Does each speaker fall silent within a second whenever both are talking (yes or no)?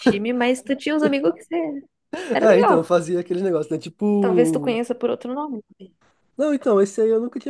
yes